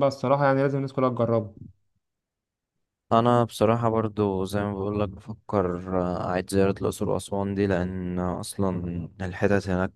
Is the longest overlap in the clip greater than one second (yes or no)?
no